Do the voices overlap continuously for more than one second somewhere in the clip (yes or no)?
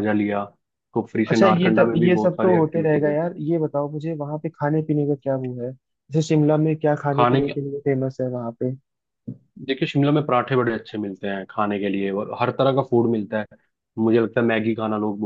yes